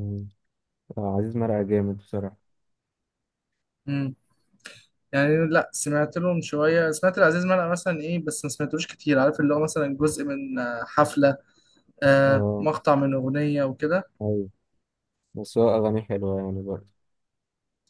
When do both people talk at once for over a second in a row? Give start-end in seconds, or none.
none